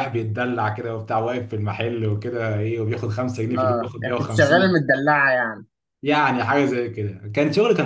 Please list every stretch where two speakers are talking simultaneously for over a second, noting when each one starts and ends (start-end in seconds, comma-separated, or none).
3.6-4.9